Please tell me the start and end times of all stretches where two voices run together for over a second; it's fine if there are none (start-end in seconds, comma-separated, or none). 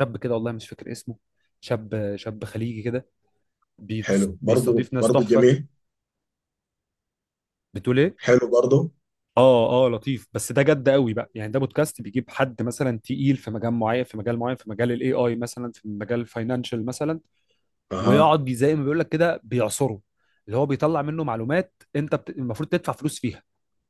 4.0-5.5